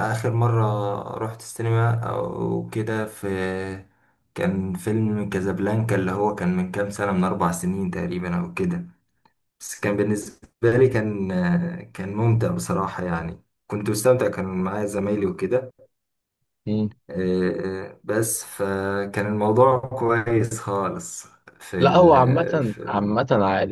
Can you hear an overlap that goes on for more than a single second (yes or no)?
yes